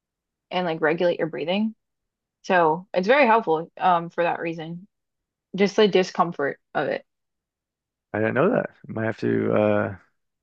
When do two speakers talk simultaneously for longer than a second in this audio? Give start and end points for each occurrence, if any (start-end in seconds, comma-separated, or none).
none